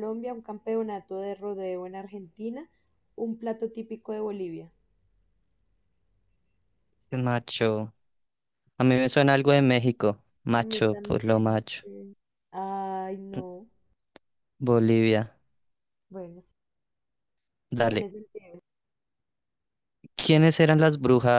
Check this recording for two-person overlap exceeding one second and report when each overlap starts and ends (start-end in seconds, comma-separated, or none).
10.6-11.8